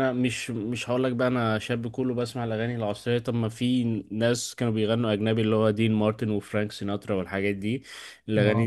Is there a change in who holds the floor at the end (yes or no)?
no